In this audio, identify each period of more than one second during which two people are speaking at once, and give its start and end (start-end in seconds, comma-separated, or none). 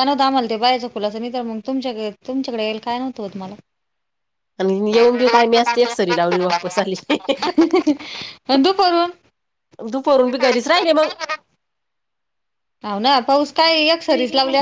none